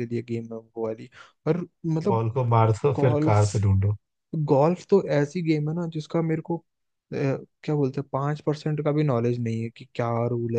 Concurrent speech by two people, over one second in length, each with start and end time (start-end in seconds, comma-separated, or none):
none